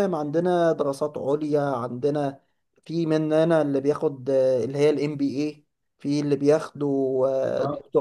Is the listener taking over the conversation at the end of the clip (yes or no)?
no